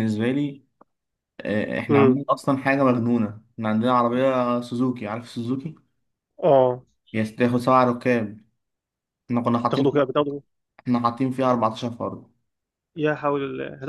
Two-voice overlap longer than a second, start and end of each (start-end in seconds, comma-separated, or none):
none